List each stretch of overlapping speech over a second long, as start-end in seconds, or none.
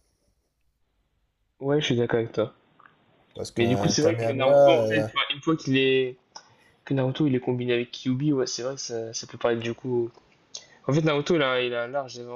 3.6-5.1